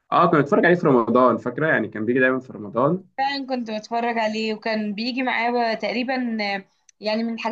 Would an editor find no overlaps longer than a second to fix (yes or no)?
yes